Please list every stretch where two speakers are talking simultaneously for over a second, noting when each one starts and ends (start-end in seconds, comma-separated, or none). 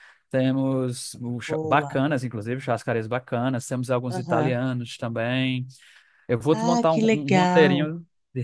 6.5-7.9